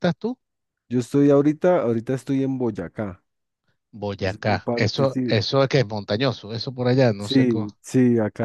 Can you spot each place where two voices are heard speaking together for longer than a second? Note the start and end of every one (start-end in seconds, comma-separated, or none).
4.2-5.4